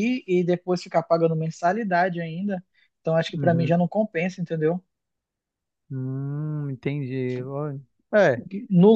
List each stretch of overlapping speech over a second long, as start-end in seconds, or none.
none